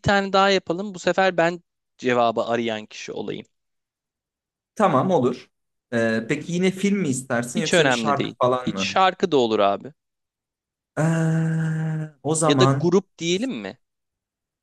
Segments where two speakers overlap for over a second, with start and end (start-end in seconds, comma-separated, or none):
7.5-9.0